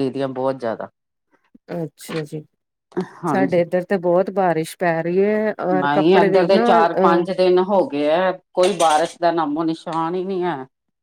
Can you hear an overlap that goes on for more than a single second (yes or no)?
yes